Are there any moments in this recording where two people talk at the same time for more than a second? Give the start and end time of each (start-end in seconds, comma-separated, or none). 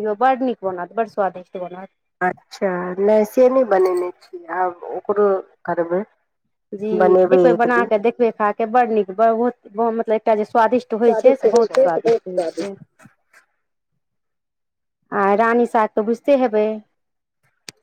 11.1-12.4